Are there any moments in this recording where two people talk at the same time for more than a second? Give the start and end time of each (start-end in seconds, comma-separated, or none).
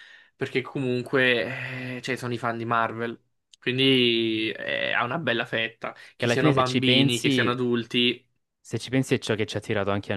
6.2-7.5